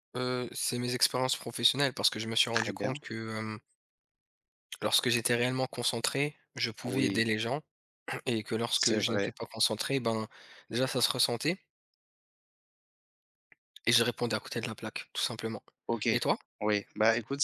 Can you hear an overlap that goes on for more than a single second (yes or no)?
no